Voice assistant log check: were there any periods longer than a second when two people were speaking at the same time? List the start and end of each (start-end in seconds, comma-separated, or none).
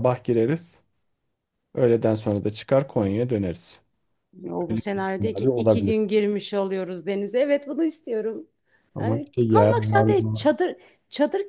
4.7-6.0, 9.0-10.5